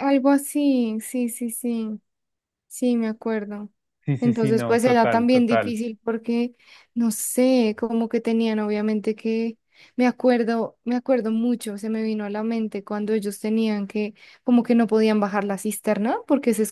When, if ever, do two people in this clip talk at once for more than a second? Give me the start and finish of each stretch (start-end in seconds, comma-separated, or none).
4.2-5.8